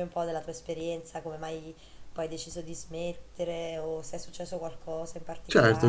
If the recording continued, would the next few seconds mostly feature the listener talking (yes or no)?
yes